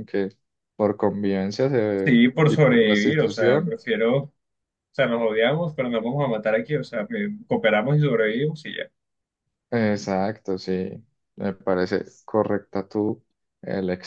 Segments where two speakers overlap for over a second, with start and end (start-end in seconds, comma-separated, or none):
2.0-3.8